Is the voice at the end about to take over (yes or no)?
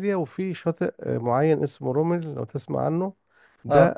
no